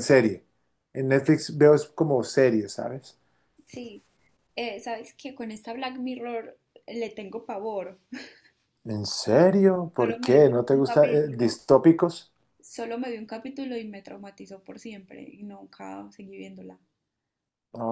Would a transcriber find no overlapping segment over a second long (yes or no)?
no